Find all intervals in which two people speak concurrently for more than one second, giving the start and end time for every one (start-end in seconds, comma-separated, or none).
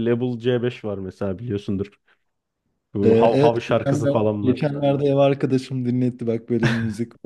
3.0-4.7